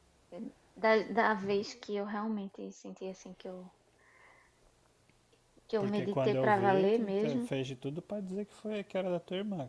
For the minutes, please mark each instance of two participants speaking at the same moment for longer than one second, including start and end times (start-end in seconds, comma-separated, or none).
5.8-7.5